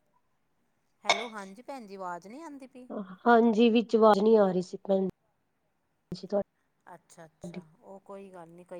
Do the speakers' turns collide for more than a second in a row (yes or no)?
no